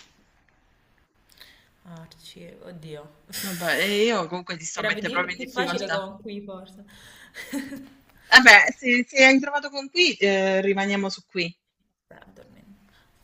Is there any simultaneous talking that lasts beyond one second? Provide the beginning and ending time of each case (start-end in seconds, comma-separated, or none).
4.8-6.0